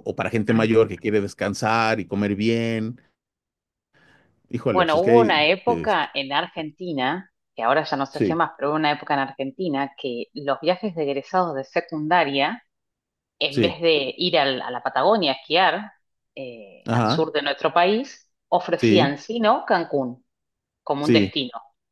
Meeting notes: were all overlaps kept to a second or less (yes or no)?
no